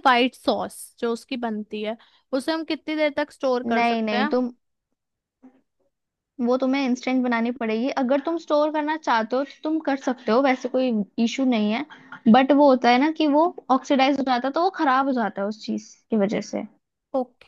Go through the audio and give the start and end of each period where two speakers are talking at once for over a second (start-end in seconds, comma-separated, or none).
none